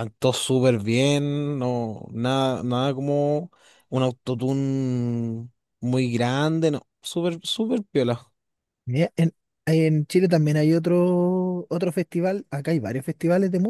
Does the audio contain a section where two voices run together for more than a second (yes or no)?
no